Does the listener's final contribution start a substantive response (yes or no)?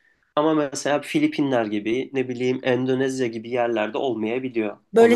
yes